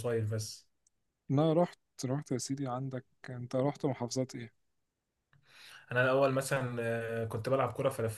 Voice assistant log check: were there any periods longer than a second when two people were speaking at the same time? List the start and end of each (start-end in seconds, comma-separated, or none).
none